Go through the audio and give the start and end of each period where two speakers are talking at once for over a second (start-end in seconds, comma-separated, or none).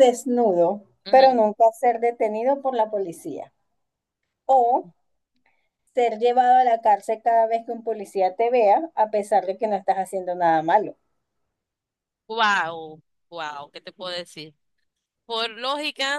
none